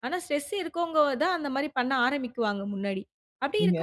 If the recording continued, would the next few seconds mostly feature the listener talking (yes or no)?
no